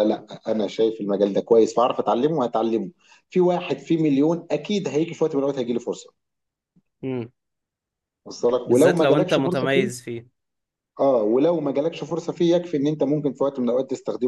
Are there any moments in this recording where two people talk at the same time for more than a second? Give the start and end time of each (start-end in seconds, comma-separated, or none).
8.7-10.0